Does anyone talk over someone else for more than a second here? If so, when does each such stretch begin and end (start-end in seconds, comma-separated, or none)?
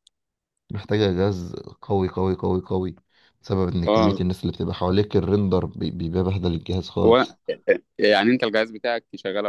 none